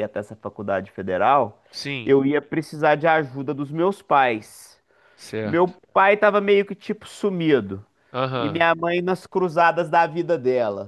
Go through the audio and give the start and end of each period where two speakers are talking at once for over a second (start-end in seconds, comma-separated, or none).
none